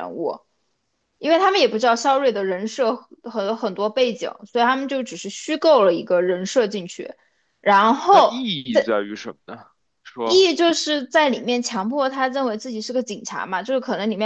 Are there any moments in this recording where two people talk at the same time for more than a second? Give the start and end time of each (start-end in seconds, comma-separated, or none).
none